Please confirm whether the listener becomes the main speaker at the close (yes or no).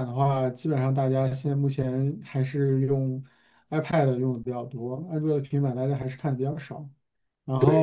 yes